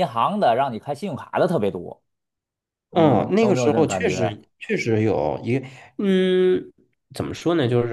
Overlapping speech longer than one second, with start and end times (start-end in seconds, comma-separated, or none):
2.9-4.4